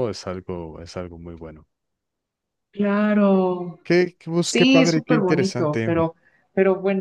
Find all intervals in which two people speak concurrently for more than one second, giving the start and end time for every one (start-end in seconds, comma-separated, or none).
4.4-6.1